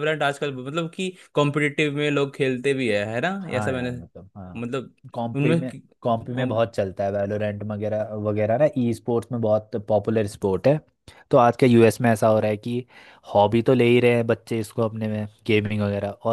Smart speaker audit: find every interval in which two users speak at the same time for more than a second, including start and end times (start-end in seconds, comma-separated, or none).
none